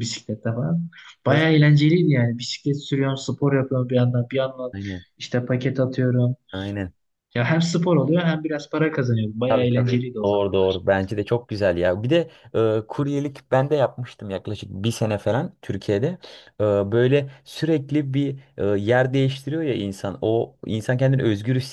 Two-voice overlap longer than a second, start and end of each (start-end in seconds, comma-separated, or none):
9.5-10.8